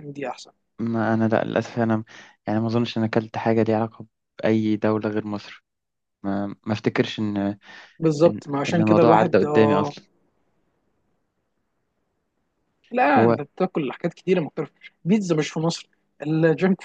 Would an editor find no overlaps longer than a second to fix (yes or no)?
no